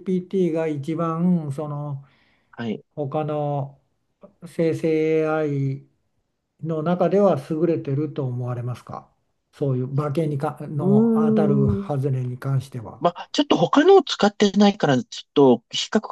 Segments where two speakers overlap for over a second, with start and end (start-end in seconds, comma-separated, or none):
10.8-12.2